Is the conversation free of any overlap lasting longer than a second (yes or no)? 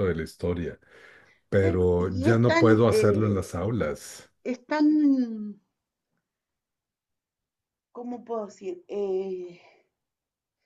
no